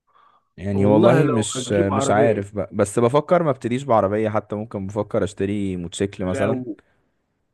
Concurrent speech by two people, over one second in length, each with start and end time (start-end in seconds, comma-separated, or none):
0.7-2.5